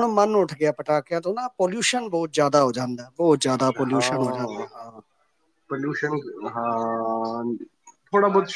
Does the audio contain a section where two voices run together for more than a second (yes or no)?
no